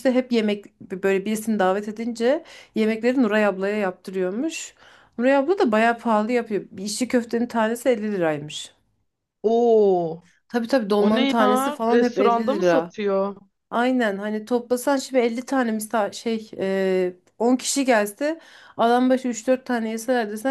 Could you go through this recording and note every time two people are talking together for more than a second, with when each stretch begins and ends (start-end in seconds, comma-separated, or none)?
11.0-12.9